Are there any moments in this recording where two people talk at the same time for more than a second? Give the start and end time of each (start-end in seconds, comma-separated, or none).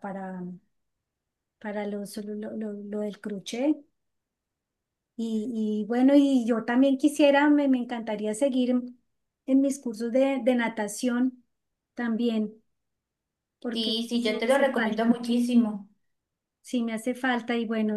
13.7-15.2